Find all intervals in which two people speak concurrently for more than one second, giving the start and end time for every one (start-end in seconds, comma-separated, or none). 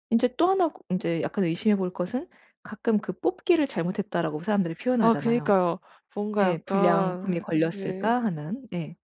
6.4-8.1